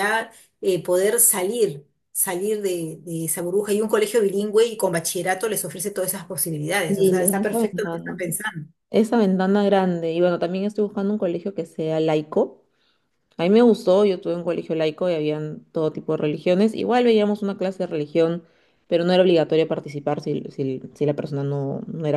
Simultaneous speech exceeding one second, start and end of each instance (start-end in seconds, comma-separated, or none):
6.9-8.1